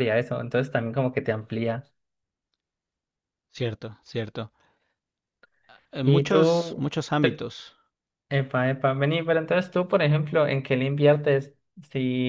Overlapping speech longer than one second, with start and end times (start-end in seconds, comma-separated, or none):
6.0-7.5